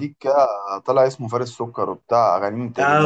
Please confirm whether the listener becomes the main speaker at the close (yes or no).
yes